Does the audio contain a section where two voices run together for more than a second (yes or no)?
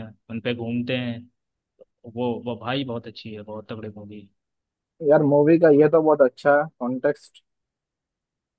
no